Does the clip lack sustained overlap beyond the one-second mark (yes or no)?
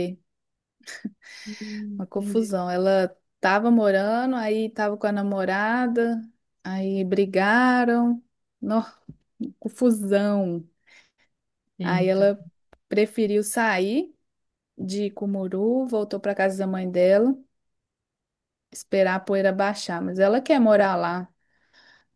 yes